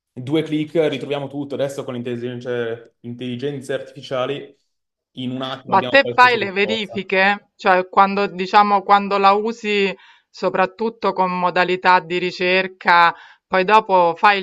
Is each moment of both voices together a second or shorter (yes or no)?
no